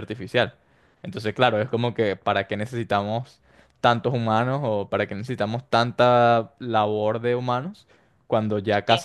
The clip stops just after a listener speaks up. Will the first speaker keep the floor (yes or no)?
yes